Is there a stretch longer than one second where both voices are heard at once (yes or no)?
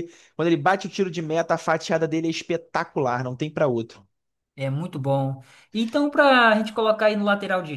no